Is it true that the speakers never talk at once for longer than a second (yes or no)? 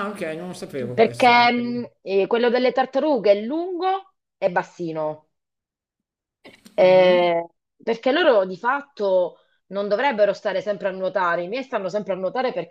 yes